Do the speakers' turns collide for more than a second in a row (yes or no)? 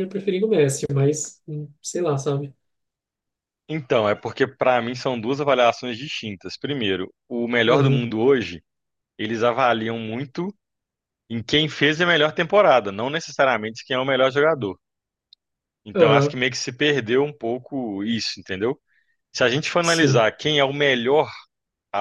no